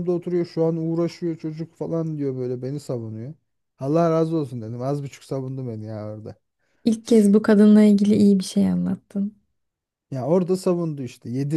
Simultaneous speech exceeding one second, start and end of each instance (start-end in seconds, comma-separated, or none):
none